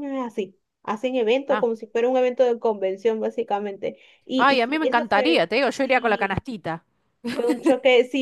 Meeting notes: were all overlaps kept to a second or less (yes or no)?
no